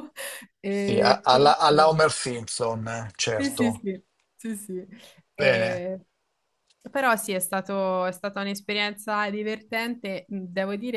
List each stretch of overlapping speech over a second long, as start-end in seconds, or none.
0.7-1.9